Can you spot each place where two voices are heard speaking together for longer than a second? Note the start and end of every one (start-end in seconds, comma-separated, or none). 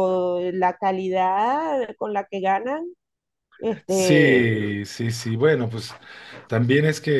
none